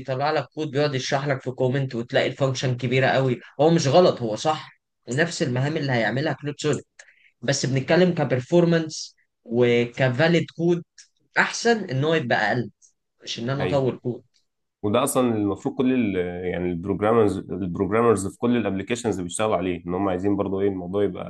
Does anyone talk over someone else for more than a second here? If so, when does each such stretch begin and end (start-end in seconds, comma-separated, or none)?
none